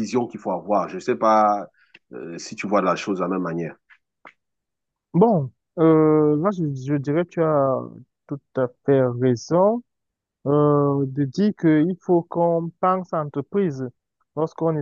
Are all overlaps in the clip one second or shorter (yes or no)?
yes